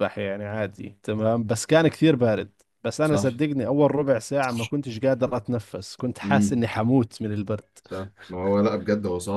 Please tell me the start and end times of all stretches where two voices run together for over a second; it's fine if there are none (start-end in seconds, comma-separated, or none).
none